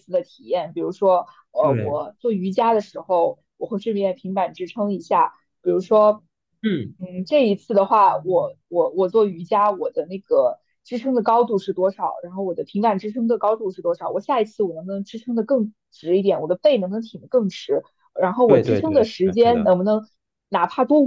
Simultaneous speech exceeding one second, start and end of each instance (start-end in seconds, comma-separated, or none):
18.4-19.7